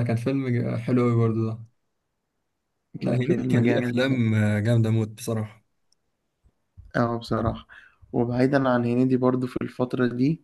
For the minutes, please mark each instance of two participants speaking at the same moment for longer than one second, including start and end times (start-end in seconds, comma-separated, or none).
3.0-4.2